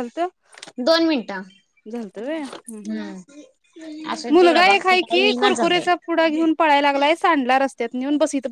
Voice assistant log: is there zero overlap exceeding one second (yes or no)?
no